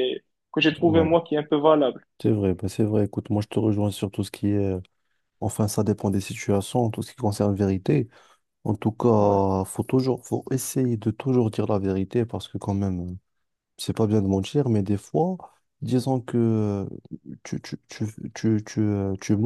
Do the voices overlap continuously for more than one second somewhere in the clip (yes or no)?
no